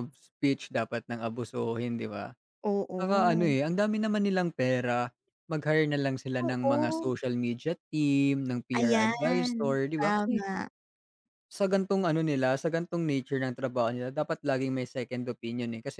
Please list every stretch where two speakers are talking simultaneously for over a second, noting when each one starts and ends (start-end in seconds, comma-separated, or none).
8.8-10.4